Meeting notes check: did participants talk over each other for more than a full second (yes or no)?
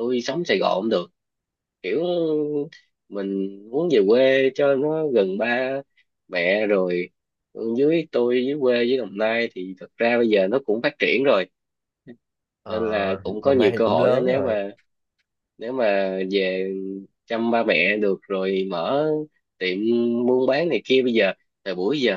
yes